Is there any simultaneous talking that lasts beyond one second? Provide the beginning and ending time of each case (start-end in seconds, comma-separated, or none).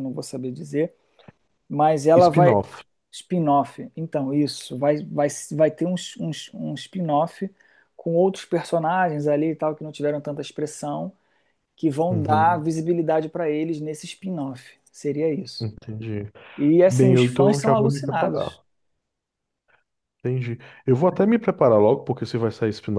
16.8-18.6